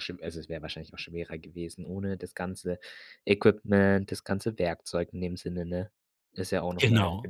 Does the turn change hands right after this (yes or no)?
yes